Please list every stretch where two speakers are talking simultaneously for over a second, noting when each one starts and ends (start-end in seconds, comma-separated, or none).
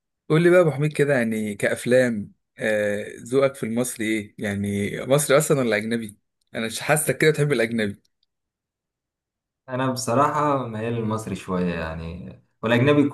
none